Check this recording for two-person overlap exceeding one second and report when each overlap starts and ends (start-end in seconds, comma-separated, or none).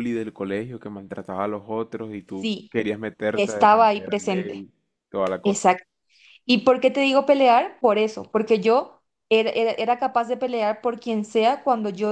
3.3-4.6